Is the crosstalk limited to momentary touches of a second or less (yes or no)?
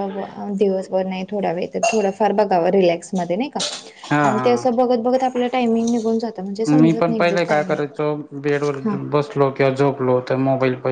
yes